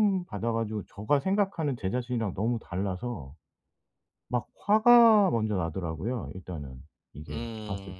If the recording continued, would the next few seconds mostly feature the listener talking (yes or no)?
yes